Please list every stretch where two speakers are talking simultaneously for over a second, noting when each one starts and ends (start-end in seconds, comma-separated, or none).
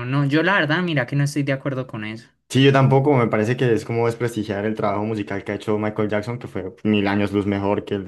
none